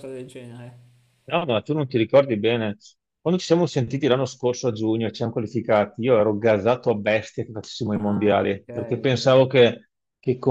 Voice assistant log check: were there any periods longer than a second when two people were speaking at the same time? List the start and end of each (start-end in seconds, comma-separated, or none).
8.0-9.4